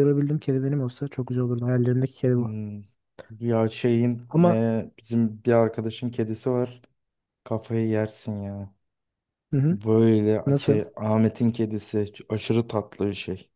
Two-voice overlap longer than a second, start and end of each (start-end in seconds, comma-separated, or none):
none